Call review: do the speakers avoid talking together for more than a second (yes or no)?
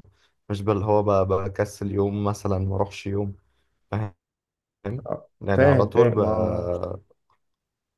no